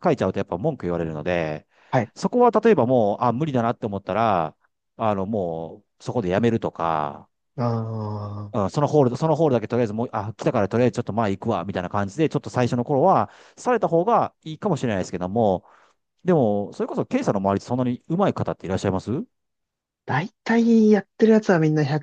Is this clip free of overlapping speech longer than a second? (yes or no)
yes